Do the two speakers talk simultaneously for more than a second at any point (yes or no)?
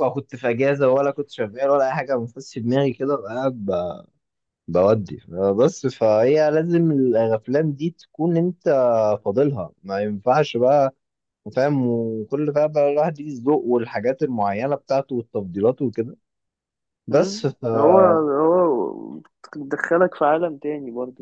no